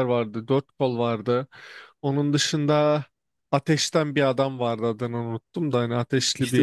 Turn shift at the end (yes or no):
yes